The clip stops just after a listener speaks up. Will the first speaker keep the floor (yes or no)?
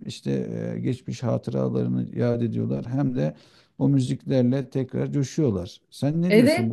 no